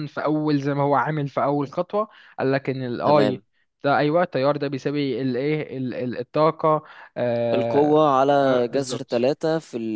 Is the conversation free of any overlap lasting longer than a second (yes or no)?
no